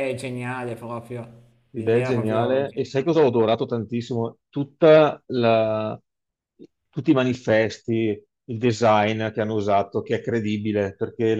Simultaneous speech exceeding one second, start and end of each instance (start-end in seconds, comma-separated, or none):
1.8-3.2